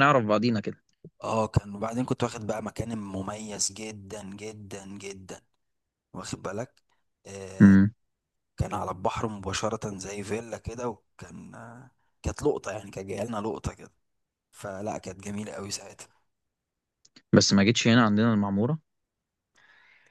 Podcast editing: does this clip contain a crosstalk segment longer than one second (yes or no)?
no